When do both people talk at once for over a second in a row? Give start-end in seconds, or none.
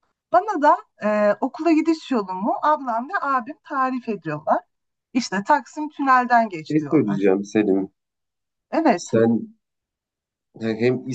none